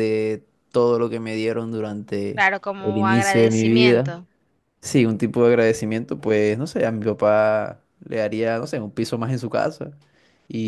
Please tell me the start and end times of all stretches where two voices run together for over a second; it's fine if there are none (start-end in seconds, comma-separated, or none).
2.3-4.1